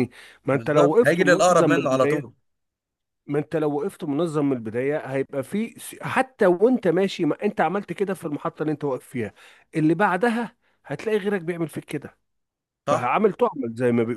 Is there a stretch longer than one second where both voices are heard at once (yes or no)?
yes